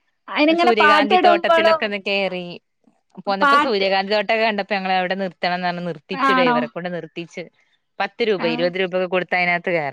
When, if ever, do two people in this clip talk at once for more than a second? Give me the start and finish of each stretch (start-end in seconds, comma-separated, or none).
0.6-1.8